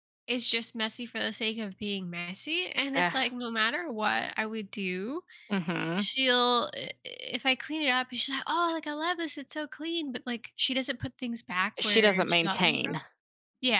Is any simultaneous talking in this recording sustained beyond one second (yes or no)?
yes